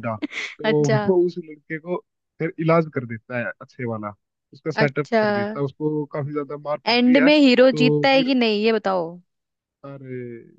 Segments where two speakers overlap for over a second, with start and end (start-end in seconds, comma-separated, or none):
6.9-8.3